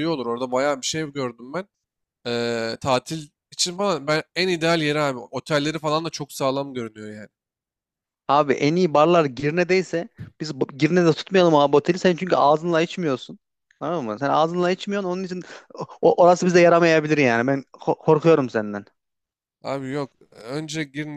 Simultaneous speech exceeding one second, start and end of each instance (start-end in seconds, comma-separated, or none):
none